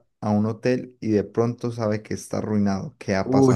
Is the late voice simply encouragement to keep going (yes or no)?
no